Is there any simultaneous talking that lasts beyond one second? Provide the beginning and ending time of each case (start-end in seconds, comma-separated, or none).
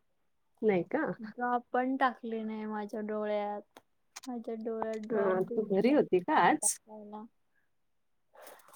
5.1-6.7